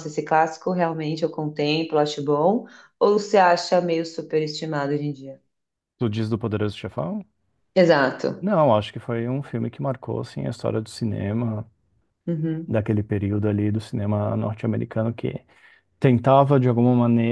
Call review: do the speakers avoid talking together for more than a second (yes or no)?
yes